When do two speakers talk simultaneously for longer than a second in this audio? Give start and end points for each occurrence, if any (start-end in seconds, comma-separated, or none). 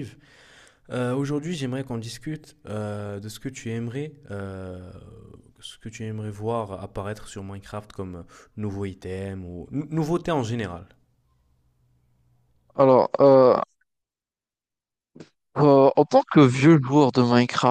none